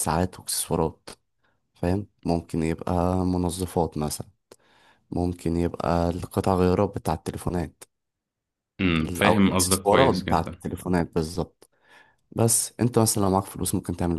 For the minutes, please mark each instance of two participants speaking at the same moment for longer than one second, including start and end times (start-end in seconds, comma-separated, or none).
9.0-10.6